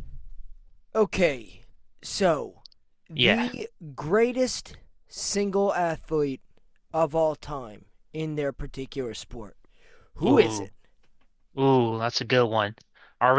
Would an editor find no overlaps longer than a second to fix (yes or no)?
yes